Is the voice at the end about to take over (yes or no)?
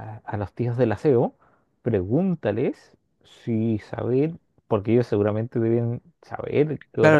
yes